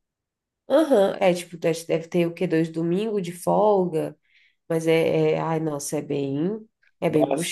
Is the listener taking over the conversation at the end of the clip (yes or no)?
yes